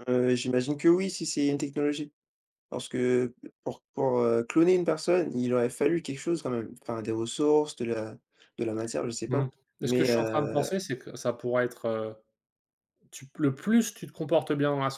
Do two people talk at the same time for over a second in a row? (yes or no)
yes